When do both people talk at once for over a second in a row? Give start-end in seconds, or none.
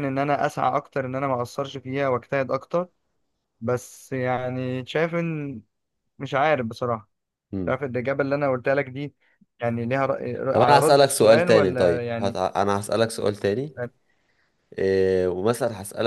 10.5-12.4